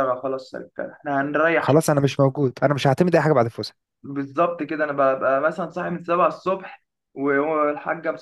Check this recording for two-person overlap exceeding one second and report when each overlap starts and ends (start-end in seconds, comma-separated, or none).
none